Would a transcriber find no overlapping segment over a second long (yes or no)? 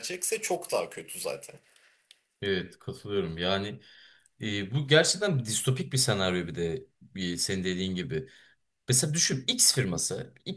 yes